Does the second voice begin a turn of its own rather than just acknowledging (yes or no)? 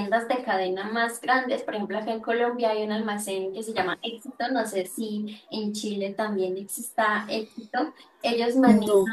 no